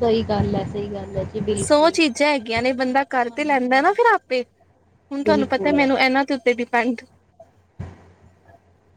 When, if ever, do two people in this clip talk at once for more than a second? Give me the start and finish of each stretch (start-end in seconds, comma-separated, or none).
none